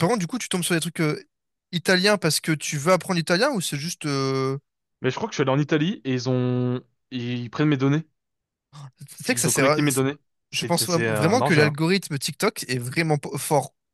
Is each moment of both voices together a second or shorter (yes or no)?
no